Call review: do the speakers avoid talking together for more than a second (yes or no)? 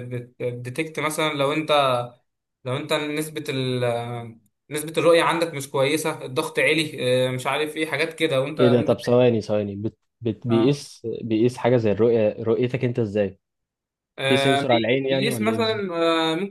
no